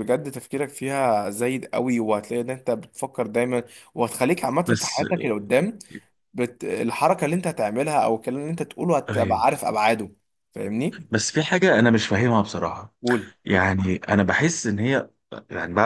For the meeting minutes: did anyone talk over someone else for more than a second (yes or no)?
no